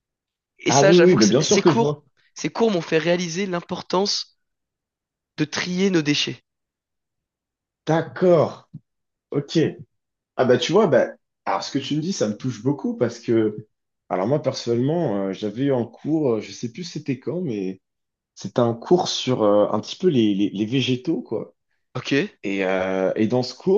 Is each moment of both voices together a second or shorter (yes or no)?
no